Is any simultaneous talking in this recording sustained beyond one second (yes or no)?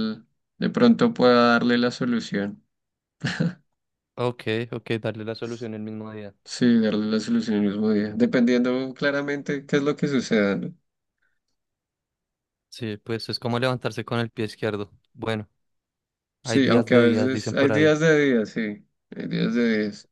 yes